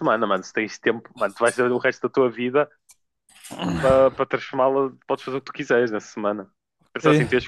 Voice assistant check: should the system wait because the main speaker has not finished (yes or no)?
yes